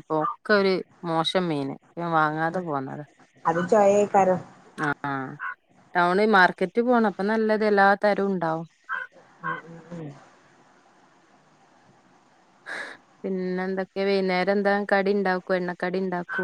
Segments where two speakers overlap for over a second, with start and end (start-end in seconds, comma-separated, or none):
none